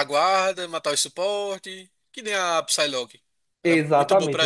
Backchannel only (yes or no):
no